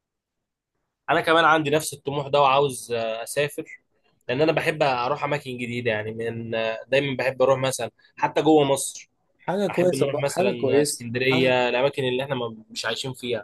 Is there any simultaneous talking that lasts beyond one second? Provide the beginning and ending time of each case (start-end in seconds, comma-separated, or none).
9.7-11.1